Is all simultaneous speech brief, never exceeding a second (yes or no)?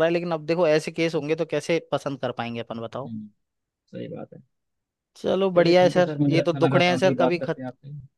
no